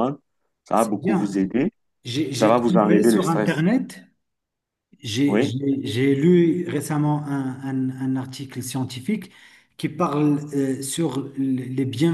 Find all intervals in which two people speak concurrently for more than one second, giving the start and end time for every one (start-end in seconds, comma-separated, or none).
2.3-3.6